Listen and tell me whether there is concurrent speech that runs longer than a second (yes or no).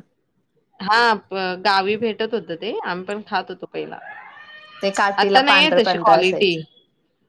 yes